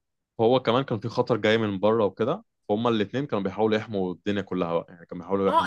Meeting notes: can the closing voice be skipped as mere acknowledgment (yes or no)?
no